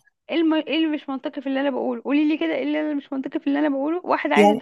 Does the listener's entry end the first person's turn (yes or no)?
no